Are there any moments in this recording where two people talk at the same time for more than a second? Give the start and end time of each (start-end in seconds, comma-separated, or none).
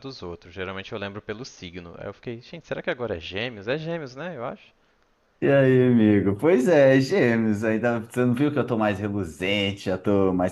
none